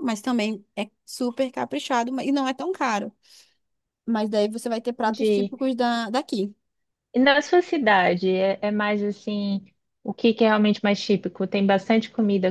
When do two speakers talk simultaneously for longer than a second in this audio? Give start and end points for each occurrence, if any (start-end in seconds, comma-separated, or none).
none